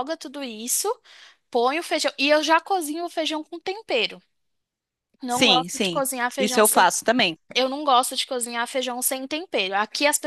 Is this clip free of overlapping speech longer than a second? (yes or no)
no